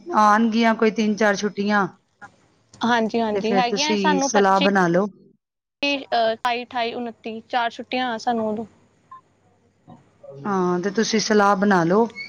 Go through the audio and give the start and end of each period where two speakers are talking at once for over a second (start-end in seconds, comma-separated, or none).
none